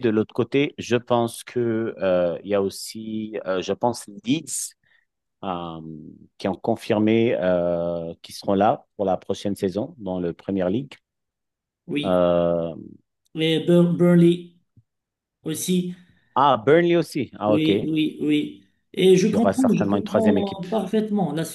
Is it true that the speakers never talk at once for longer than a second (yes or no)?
no